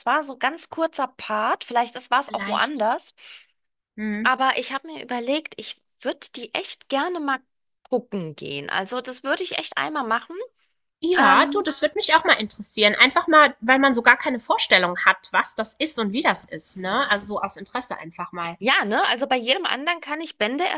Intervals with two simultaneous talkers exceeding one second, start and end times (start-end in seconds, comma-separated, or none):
none